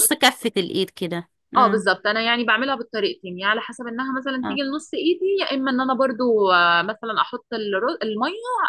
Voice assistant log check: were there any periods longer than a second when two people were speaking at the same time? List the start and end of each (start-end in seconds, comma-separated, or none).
none